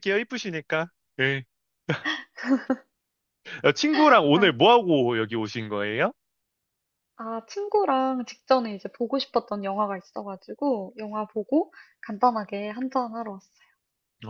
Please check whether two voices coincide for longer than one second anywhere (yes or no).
no